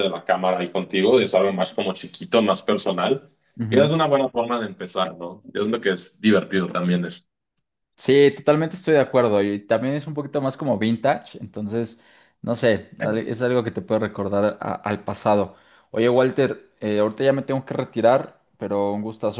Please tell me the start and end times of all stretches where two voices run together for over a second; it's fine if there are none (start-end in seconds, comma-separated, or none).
none